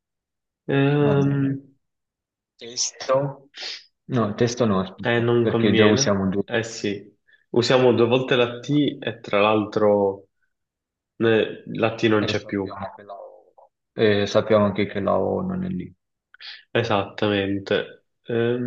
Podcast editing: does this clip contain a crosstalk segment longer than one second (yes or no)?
yes